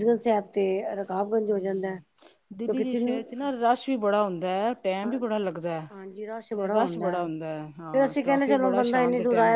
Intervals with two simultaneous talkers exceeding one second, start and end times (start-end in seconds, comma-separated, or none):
none